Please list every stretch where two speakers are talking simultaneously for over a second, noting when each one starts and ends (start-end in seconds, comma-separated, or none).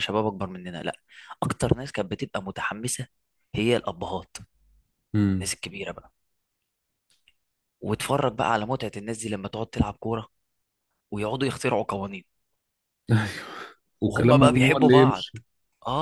14.0-15.2